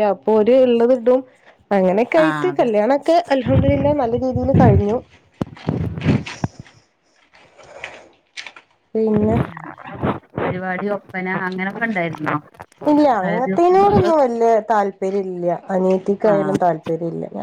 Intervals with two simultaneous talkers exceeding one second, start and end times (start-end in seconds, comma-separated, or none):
none